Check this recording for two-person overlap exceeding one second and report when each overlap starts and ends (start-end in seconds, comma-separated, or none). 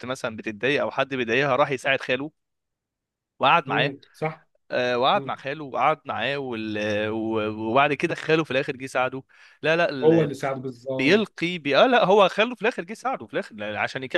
none